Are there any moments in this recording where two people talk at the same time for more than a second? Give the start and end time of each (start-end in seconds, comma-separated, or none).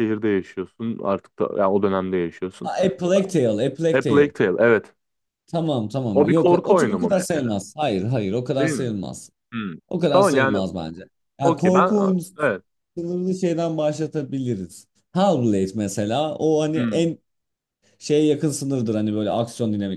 6.1-7.5